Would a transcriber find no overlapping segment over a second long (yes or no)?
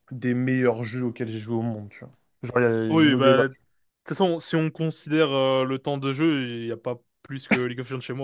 yes